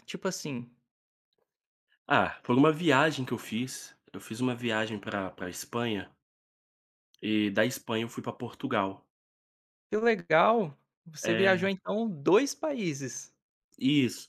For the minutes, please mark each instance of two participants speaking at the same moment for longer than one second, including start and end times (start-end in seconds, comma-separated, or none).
none